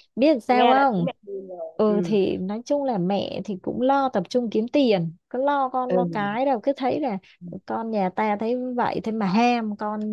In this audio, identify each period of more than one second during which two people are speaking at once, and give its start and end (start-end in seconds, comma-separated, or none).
none